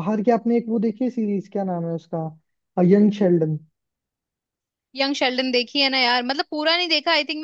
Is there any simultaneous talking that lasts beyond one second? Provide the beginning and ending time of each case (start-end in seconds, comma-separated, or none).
none